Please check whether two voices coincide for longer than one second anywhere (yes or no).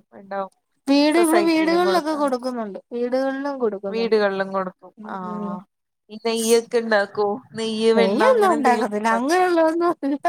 yes